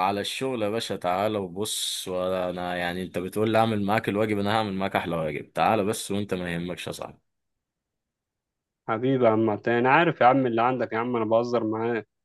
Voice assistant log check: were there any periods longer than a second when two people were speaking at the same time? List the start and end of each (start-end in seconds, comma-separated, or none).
none